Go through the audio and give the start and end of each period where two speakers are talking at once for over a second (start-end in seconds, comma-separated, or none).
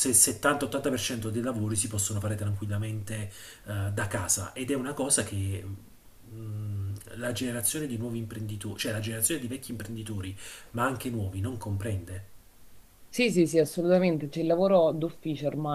none